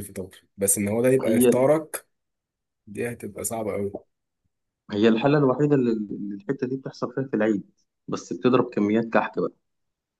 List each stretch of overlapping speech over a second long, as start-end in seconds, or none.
none